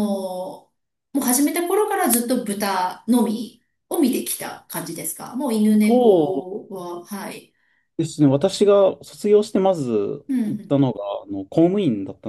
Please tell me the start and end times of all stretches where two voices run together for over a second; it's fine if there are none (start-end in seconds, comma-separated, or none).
none